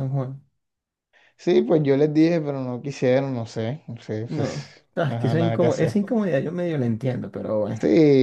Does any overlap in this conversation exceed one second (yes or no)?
yes